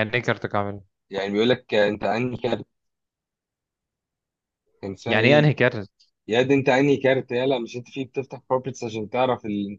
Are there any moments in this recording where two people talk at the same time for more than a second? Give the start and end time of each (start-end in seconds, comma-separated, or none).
none